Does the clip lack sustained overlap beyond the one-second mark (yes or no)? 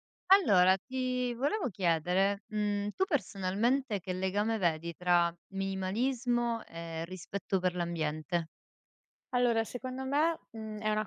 yes